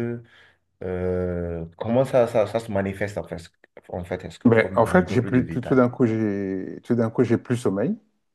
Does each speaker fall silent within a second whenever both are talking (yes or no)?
no